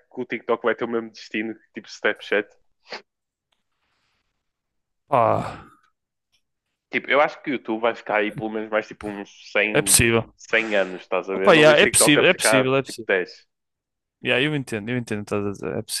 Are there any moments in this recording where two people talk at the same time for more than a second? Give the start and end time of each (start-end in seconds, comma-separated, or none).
11.3-13.1